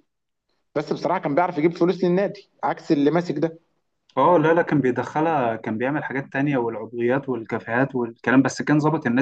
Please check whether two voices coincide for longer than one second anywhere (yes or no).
no